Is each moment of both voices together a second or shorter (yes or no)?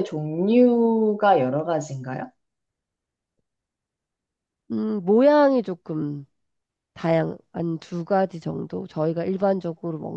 yes